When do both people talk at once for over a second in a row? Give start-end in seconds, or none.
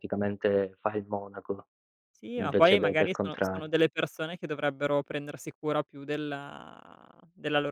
2.4-3.7